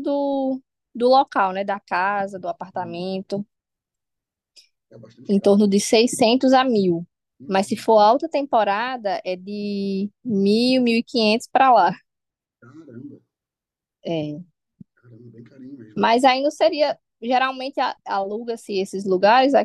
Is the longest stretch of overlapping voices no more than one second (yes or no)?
yes